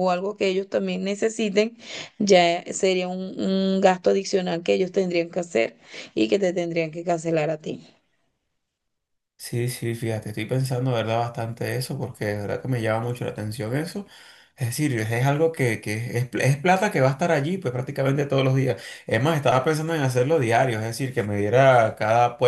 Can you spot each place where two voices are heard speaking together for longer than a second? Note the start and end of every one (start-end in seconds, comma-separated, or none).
none